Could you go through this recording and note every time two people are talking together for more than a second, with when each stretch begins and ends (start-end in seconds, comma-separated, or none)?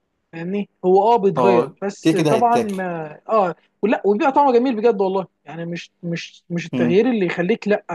1.4-2.8